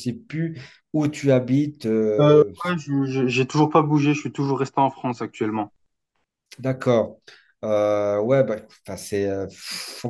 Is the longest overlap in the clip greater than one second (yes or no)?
no